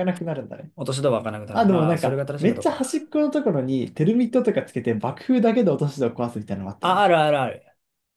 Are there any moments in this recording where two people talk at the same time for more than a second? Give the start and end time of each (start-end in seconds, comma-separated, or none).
1.5-3.0